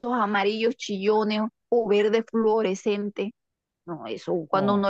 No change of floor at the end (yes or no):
yes